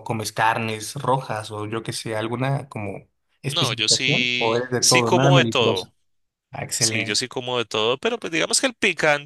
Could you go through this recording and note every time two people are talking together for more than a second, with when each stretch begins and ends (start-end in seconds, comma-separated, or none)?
3.5-5.9